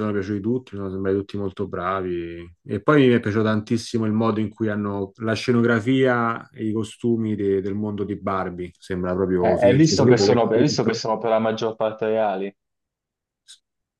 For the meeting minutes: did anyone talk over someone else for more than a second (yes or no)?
yes